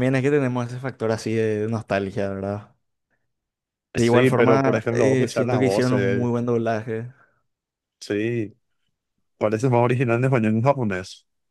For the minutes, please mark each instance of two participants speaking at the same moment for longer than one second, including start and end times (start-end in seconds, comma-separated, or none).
4.0-6.3